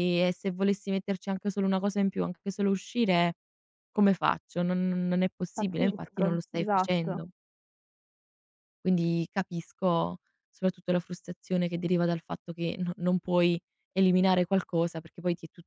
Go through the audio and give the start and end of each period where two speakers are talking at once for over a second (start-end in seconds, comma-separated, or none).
5.5-7.3